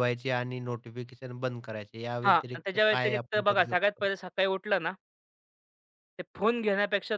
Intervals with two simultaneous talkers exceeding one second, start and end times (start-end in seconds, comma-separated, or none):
2.2-4.1